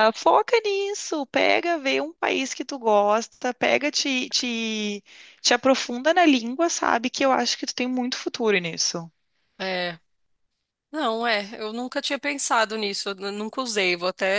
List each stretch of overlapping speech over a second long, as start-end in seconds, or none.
none